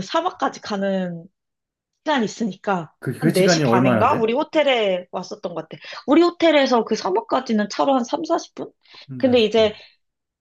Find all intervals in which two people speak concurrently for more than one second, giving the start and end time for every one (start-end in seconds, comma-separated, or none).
3.0-4.3